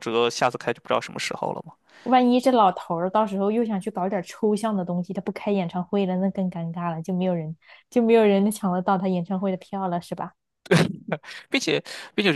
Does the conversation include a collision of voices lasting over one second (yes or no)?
no